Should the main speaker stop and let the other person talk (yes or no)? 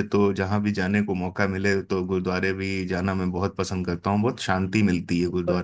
yes